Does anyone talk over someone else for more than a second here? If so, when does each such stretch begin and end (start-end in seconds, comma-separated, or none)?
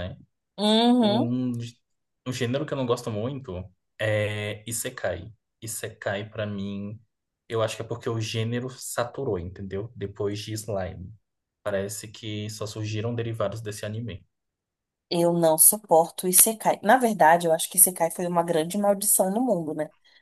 none